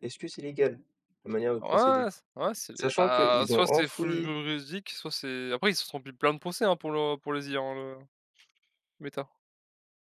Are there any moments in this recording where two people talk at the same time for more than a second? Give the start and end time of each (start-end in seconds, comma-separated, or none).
2.7-4.3